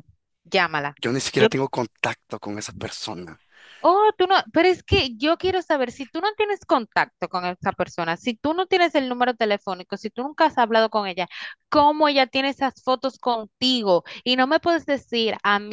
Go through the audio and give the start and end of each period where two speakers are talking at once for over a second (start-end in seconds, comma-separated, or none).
none